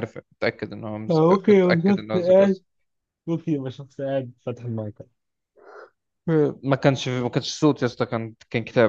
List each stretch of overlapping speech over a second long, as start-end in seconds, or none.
1.1-2.6